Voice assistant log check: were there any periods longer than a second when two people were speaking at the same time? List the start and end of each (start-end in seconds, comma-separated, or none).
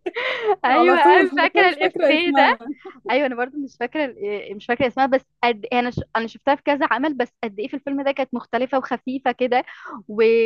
0.7-2.5